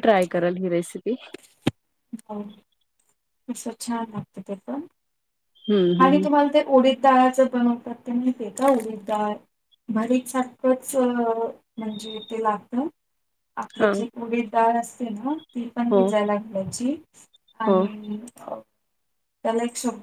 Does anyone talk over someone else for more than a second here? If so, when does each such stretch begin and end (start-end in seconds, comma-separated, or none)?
none